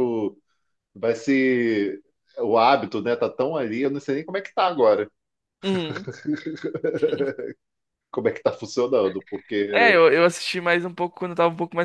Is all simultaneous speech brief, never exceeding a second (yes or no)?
yes